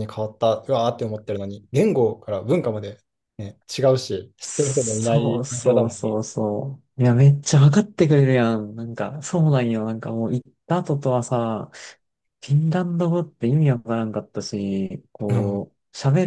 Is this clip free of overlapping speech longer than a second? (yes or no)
no